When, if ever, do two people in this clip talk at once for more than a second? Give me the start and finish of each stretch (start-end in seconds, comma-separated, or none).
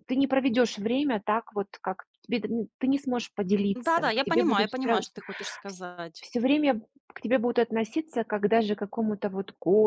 3.7-5.0